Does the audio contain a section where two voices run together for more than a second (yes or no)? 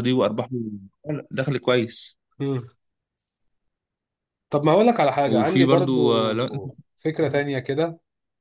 yes